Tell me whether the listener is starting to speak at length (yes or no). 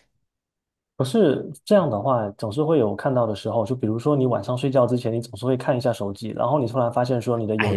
yes